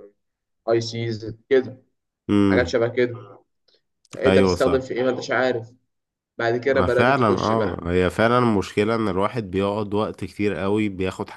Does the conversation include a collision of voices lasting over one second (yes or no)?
yes